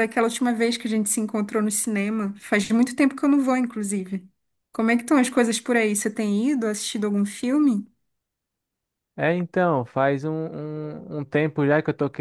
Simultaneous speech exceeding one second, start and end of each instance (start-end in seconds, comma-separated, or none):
none